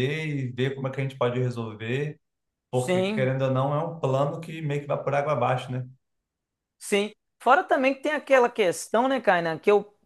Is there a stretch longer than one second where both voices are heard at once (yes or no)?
no